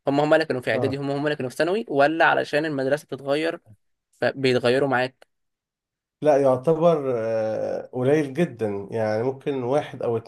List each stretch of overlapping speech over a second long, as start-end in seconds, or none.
none